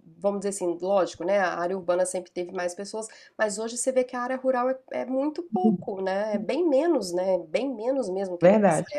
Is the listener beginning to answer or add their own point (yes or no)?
no